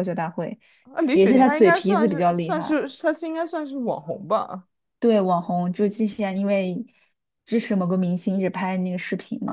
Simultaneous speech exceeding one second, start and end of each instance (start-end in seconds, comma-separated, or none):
1.1-2.8